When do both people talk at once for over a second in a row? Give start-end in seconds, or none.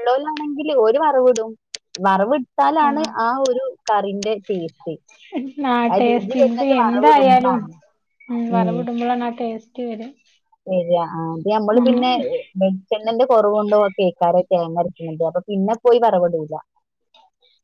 5.9-7.6